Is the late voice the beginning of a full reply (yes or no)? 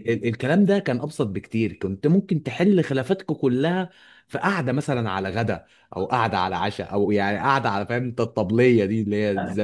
yes